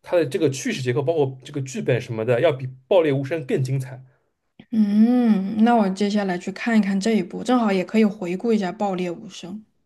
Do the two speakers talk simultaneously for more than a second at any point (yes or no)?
no